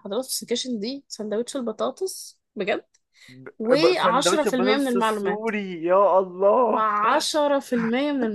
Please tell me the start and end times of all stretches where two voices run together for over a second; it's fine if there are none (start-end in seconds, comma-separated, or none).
3.6-5.5